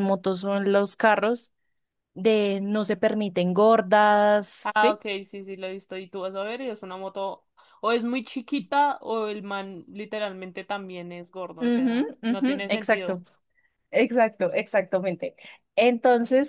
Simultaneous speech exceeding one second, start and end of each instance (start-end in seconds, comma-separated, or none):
11.6-13.2